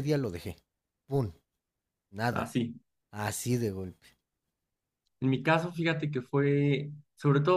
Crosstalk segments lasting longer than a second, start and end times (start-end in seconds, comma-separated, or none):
none